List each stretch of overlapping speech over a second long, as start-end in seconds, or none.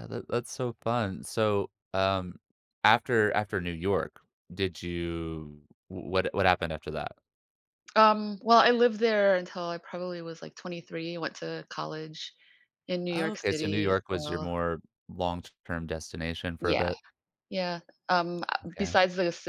13.1-14.5